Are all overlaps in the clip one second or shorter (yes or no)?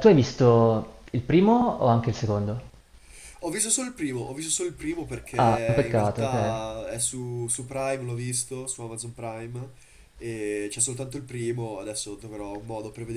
no